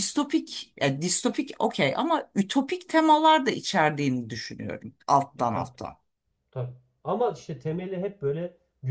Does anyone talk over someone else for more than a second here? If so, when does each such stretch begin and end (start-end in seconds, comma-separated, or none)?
none